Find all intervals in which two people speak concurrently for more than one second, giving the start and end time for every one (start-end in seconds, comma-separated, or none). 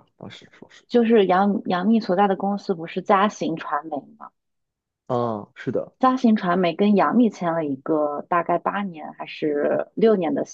none